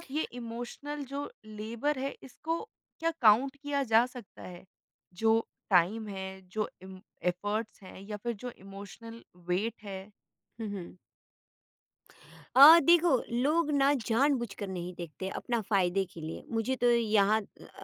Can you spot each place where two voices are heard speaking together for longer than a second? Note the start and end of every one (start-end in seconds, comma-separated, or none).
none